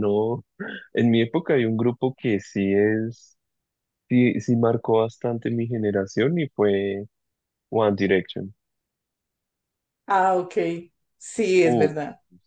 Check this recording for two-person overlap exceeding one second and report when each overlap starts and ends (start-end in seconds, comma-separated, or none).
none